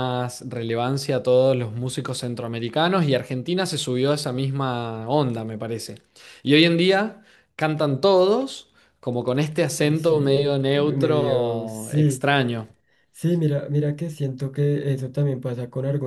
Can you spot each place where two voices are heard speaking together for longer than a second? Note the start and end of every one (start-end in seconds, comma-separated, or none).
9.8-12.3